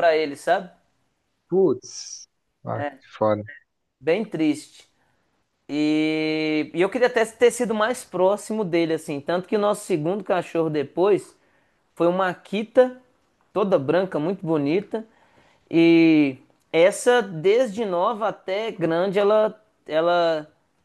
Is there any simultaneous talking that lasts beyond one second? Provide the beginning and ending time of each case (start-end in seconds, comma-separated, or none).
none